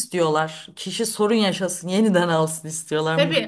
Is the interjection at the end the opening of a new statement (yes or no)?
yes